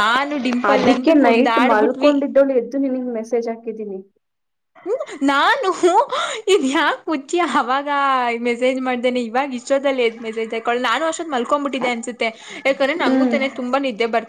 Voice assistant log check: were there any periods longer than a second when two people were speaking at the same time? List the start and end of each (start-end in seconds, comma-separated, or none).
0.7-2.1